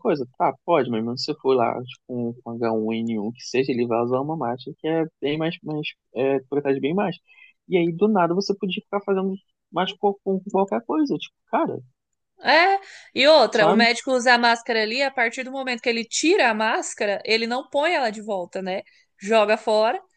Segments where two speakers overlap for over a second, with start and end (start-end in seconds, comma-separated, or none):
none